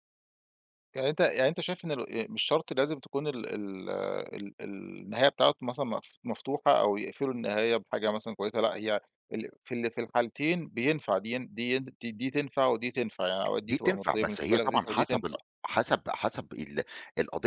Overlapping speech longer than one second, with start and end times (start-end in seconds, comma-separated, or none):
13.6-15.4